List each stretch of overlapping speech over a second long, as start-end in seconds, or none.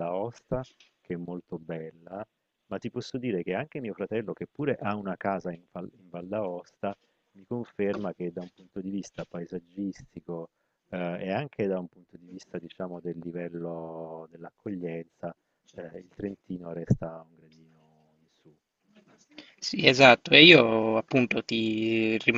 none